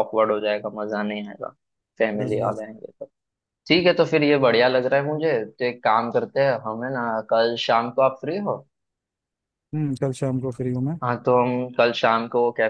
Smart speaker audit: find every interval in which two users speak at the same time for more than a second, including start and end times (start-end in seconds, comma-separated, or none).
none